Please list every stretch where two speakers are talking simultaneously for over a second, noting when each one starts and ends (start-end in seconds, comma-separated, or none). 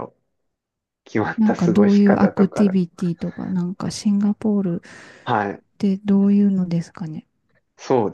1.4-2.6